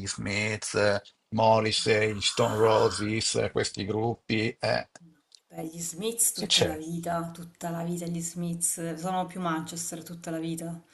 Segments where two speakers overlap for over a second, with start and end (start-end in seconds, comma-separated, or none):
1.8-3.0